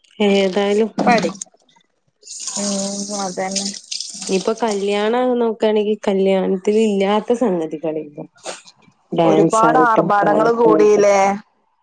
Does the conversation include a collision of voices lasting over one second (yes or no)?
yes